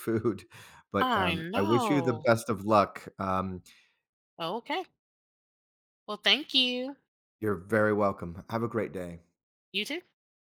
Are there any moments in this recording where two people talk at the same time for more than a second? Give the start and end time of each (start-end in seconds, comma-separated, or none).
1.0-2.2